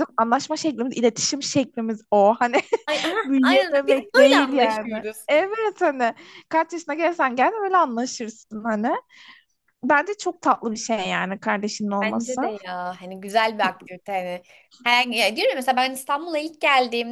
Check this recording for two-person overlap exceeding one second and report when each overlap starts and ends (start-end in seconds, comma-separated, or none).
3.2-5.3